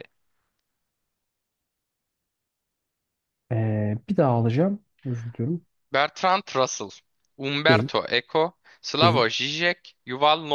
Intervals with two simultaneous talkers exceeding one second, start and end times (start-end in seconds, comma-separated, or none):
none